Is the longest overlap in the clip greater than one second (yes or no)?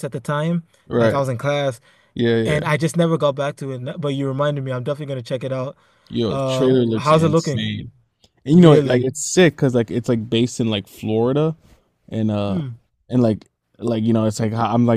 yes